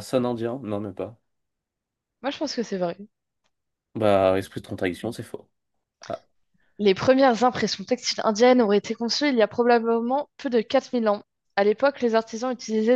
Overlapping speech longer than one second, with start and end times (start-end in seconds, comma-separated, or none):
none